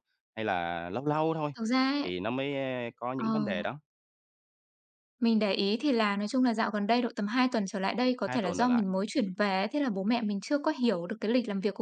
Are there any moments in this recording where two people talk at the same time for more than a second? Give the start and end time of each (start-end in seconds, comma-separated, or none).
none